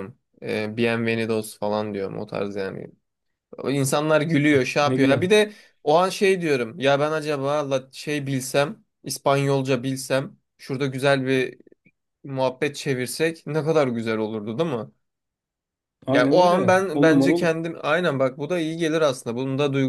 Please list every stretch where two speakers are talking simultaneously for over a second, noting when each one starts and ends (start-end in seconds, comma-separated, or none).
16.1-17.6